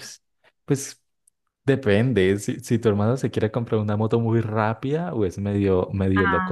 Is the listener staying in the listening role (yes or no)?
yes